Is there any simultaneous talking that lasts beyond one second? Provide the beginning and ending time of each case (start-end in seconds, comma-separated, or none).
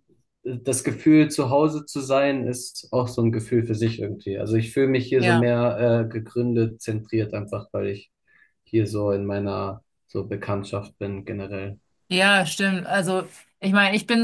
none